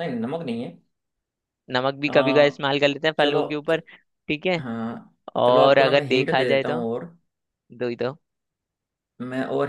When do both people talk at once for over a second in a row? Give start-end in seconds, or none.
5.4-6.8